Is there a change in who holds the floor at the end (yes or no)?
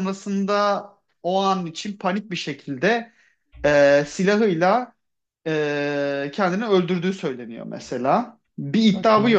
no